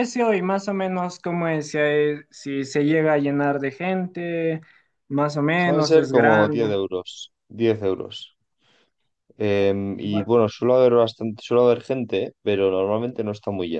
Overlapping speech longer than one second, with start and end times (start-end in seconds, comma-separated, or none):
5.5-6.7